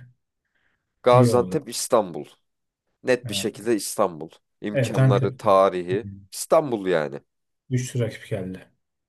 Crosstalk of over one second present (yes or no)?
yes